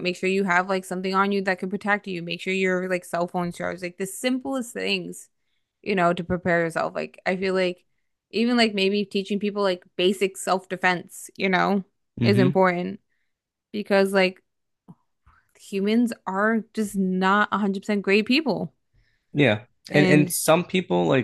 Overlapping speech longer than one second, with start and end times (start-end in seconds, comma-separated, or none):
none